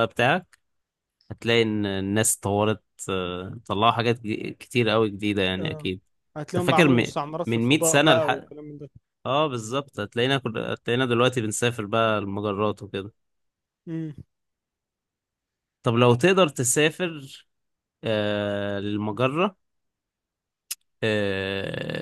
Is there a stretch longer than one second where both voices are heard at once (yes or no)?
yes